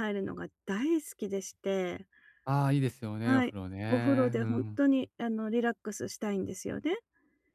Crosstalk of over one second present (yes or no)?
yes